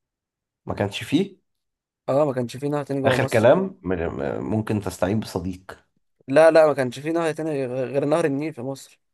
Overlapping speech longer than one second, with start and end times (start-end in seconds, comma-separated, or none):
none